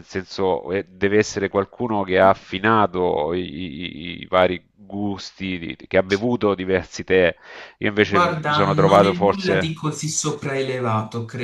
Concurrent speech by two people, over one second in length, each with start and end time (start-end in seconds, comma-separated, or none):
8.0-9.8